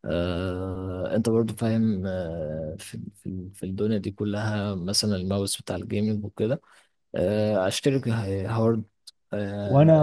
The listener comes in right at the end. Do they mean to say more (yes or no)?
yes